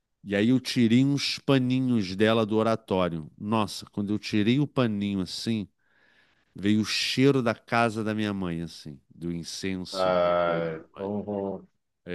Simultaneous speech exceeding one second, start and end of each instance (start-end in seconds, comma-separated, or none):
9.9-11.1